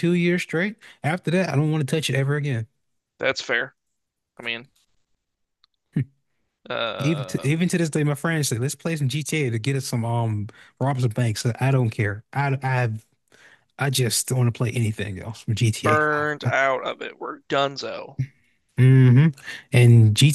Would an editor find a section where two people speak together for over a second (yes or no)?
no